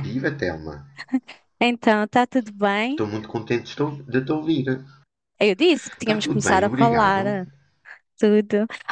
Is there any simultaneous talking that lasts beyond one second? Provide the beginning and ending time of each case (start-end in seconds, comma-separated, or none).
6.0-7.2